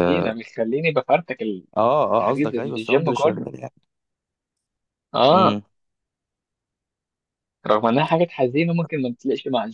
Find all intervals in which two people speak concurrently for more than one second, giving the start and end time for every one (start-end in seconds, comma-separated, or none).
2.2-3.5